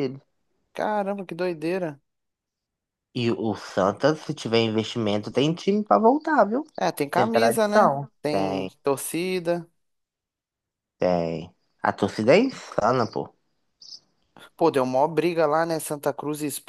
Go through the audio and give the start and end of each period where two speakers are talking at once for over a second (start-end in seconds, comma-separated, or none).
7.1-8.7